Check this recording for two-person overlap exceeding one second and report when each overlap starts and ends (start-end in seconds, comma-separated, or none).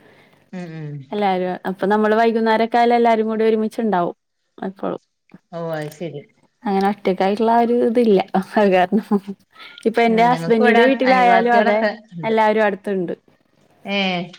10.1-11.8